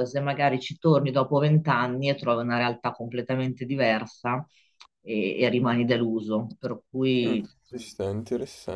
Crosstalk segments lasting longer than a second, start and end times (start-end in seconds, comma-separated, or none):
none